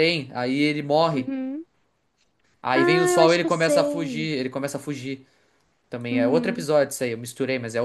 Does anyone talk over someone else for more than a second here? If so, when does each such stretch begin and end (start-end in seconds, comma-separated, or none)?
2.8-4.3